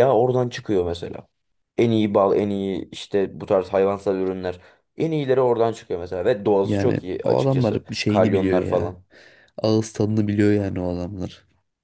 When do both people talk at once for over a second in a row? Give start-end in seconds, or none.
6.6-8.9